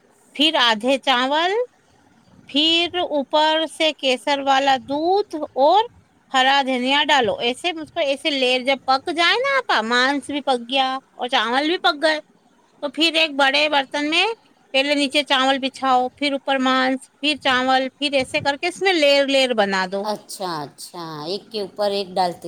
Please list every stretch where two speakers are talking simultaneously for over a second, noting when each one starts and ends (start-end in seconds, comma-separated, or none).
none